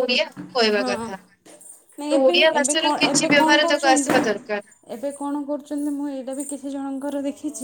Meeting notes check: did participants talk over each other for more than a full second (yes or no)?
yes